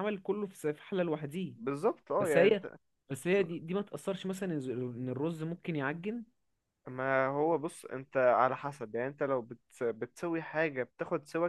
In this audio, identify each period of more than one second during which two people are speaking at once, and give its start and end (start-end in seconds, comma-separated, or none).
none